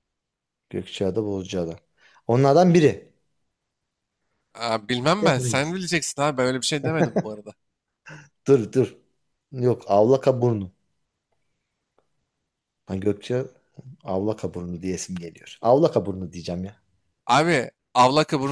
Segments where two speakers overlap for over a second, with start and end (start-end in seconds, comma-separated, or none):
none